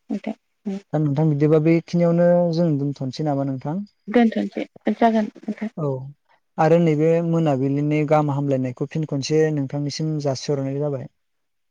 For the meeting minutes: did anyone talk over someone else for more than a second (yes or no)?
no